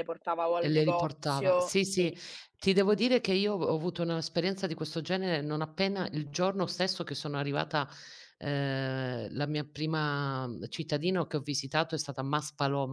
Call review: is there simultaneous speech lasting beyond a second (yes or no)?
yes